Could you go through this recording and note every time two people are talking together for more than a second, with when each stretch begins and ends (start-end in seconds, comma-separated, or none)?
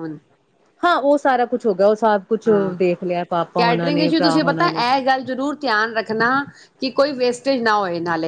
3.6-4.8